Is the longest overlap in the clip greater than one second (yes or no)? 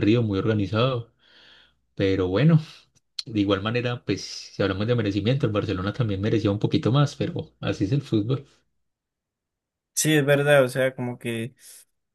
no